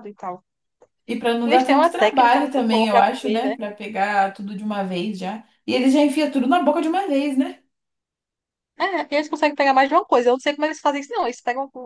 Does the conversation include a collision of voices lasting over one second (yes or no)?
yes